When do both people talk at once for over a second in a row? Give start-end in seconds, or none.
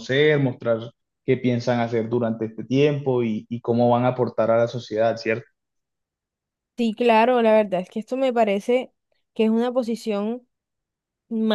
none